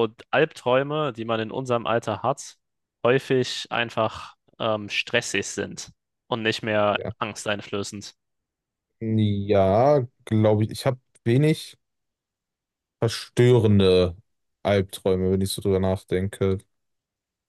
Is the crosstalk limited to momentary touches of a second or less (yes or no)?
yes